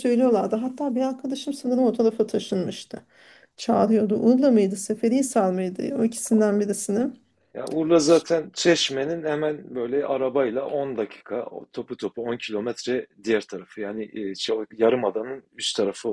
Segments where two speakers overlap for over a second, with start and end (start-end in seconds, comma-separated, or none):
none